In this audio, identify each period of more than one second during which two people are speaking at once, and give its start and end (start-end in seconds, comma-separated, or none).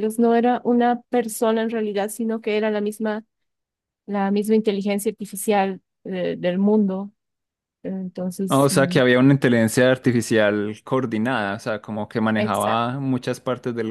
none